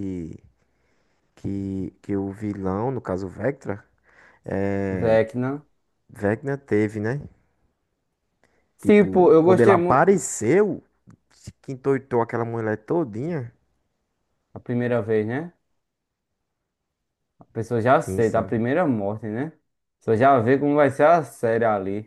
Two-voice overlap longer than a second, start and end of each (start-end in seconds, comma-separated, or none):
8.8-10.2